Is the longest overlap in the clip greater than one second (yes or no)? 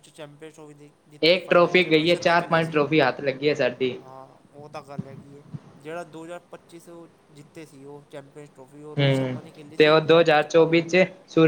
yes